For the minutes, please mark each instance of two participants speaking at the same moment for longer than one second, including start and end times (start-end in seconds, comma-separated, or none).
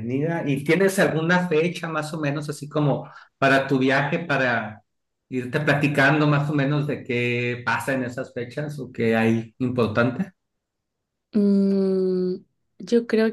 none